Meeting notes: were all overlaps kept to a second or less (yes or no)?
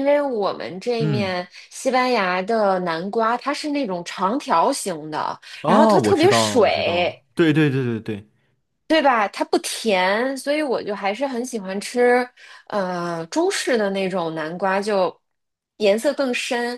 no